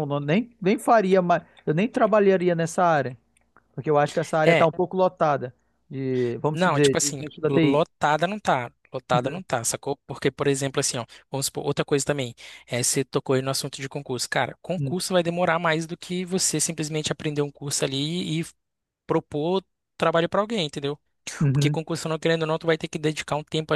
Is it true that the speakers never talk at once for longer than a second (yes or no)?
no